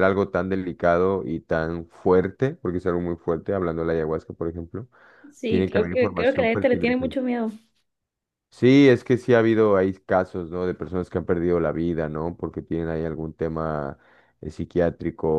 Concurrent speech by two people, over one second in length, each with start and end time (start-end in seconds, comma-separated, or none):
5.5-7.1